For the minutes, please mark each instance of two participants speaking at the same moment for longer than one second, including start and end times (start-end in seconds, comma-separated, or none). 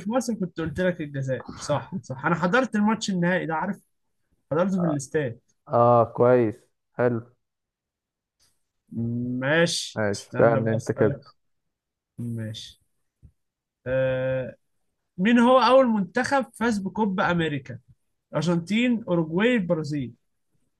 9.9-11.2